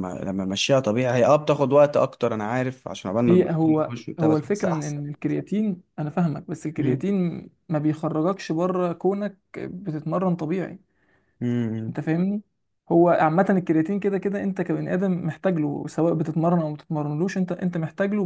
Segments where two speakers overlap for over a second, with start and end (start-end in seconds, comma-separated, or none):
3.3-5.0